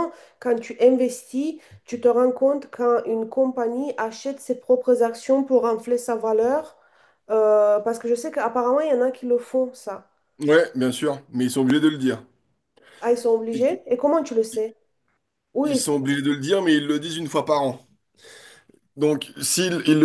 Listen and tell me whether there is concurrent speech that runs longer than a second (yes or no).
no